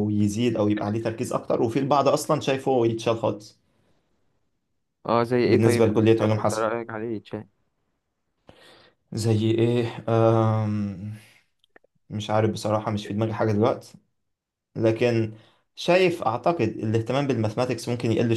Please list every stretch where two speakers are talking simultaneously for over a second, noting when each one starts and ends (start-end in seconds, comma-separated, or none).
5.4-6.7